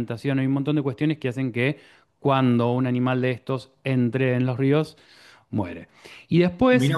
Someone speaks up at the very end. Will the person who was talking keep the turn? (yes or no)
yes